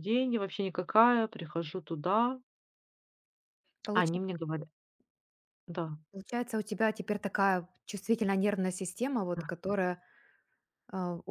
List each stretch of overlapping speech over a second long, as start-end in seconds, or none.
none